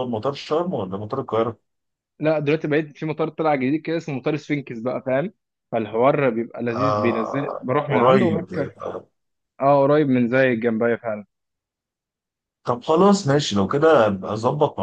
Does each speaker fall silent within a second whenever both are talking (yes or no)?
no